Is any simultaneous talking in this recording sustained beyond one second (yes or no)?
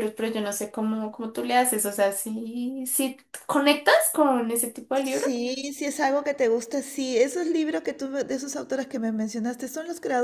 no